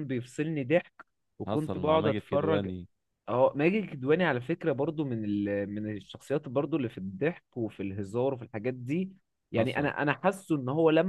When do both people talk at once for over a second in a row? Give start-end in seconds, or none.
1.5-2.7